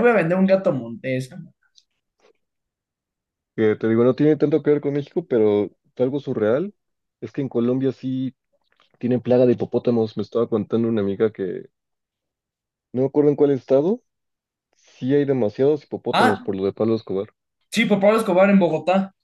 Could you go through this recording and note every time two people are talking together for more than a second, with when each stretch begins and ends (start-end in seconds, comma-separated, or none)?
none